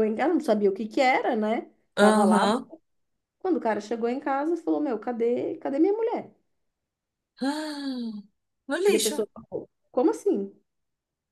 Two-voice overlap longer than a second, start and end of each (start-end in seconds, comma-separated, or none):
none